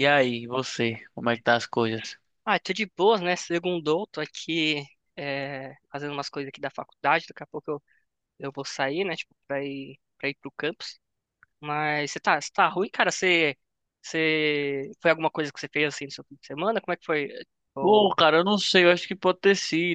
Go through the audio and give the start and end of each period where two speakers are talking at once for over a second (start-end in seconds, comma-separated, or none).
none